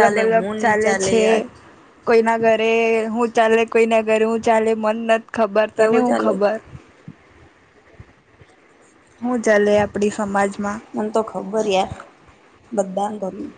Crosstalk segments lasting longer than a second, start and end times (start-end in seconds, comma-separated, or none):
none